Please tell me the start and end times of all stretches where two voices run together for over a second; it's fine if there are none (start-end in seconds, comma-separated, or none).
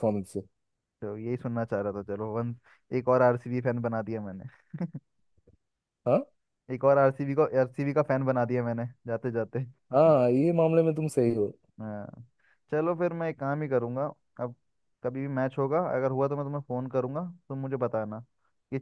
none